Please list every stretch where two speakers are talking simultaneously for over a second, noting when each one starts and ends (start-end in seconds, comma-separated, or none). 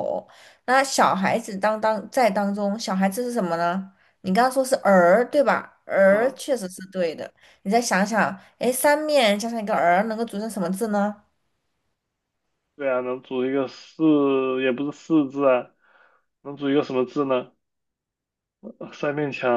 none